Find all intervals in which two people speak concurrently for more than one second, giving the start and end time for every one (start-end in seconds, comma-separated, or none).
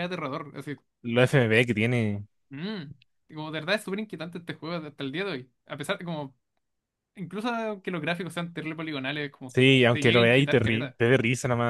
9.4-11.0